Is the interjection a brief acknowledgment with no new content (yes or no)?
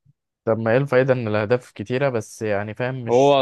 no